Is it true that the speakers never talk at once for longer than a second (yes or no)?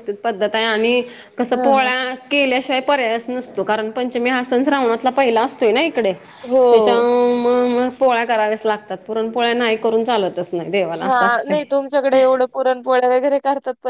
yes